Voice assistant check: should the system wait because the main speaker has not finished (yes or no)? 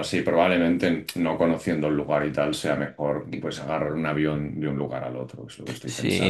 no